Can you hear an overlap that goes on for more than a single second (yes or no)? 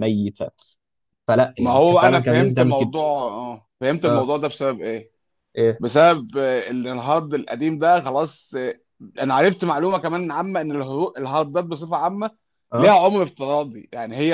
yes